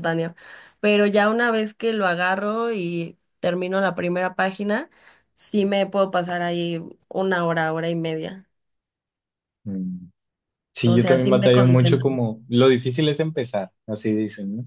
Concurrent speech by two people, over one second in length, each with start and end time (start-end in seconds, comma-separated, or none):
10.8-12.1